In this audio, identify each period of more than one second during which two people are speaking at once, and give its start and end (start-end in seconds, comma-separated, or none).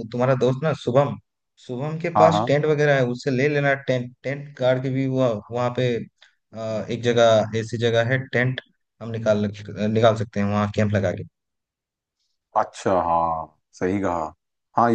none